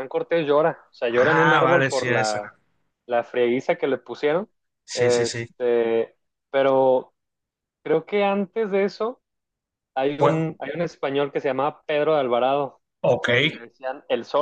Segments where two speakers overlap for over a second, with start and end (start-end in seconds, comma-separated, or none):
1.1-2.4